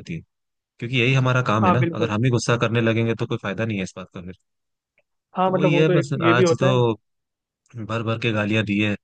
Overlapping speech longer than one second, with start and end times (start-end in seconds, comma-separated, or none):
5.5-6.8